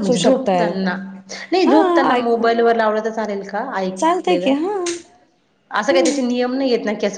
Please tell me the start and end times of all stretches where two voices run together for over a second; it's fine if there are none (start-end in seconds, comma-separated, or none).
none